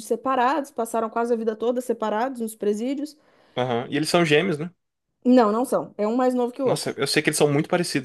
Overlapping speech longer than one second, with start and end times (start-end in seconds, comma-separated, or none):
none